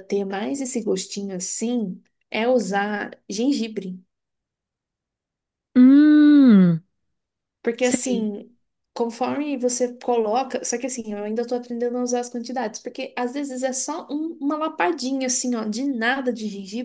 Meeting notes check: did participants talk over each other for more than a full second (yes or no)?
no